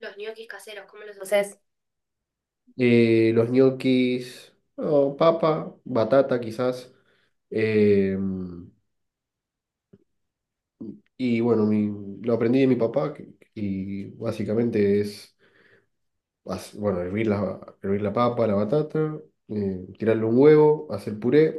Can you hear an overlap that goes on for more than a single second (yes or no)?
no